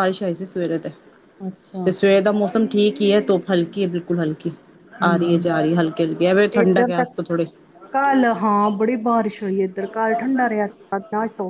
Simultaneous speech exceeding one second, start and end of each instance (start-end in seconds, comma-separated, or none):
none